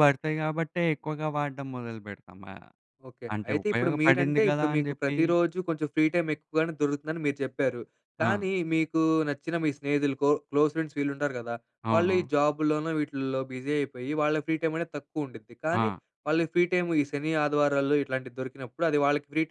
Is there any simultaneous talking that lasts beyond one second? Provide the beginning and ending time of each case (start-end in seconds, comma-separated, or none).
3.4-5.2